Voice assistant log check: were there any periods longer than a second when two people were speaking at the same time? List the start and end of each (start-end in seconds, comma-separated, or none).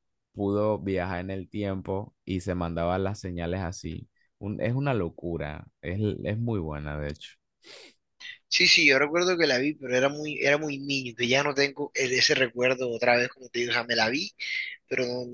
none